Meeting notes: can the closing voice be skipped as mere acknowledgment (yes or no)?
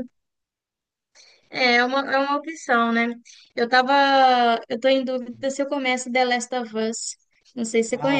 no